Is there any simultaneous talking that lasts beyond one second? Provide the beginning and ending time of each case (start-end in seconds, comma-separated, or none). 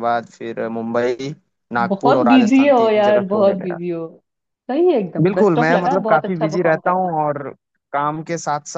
1.9-3.8, 5.2-7.2